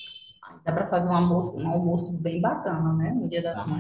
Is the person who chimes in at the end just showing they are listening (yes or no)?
no